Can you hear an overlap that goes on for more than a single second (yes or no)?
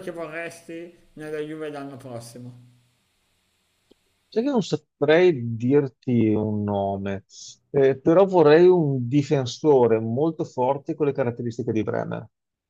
no